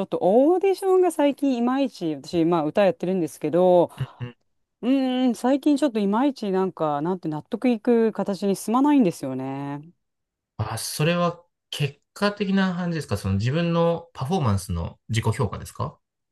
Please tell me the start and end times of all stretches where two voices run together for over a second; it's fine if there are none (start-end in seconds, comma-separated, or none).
none